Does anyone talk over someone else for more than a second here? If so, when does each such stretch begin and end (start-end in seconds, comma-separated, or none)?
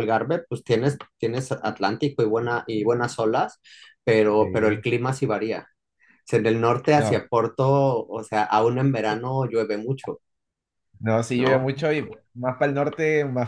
none